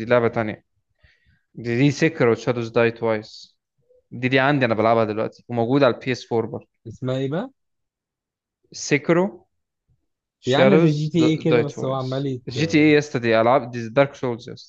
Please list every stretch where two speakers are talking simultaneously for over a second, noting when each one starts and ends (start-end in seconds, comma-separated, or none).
10.5-12.5